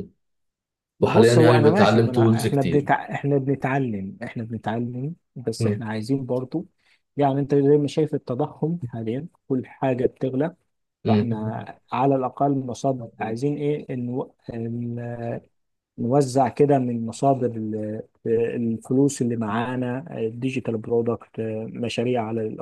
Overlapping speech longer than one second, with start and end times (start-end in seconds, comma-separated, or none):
1.0-2.9